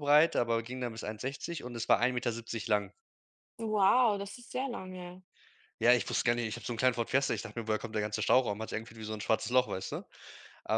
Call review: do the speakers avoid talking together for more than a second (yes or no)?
yes